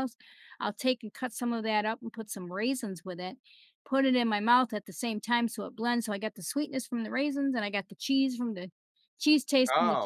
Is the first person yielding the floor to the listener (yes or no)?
no